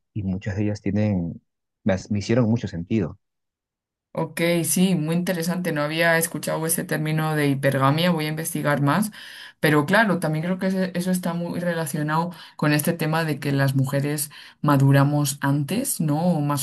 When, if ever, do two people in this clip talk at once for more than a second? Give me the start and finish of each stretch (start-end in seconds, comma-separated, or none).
none